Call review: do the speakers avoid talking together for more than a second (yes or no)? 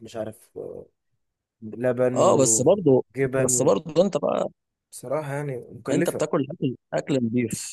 no